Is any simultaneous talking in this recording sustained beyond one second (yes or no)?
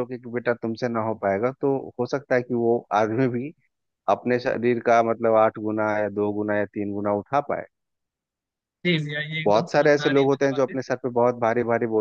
yes